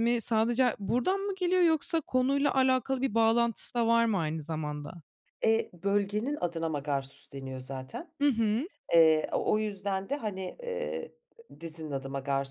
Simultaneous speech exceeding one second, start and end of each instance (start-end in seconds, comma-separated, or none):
none